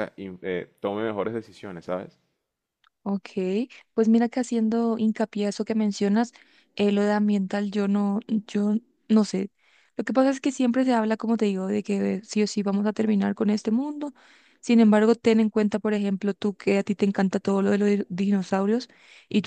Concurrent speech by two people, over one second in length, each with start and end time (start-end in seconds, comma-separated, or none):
none